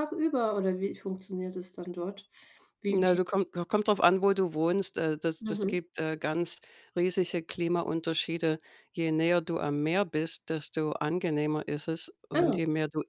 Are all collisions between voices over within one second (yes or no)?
yes